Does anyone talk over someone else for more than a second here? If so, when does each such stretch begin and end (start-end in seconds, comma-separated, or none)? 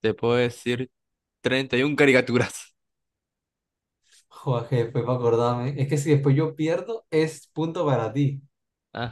none